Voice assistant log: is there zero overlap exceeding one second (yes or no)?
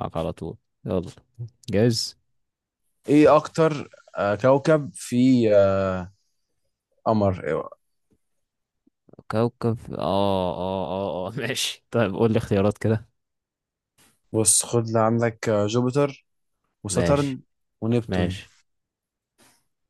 yes